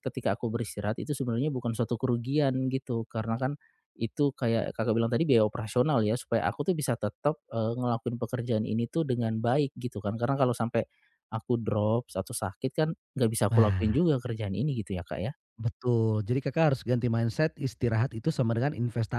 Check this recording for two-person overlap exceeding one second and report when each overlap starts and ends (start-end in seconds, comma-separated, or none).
none